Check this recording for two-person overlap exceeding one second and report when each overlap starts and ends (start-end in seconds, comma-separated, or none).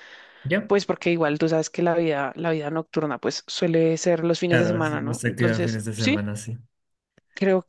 4.5-6.2